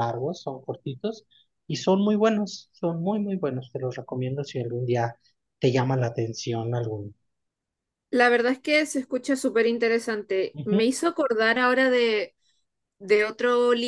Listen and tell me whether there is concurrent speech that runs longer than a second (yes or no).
no